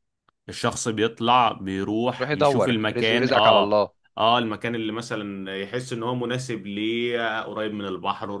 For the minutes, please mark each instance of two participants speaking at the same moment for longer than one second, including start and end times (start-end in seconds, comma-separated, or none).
2.2-3.8